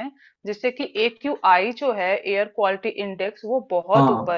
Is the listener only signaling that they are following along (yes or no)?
yes